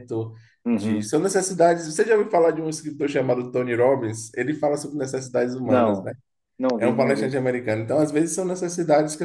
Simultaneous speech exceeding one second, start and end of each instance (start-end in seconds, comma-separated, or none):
none